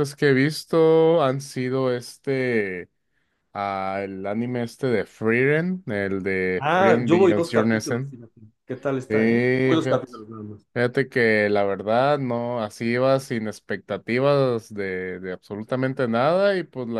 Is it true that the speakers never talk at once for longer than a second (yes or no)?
no